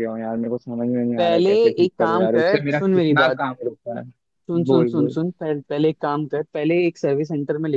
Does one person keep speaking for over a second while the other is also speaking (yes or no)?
yes